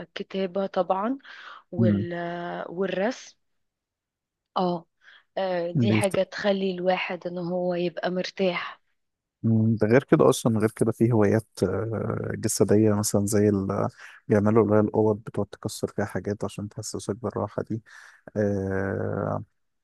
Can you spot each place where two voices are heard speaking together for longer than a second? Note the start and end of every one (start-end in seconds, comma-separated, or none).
none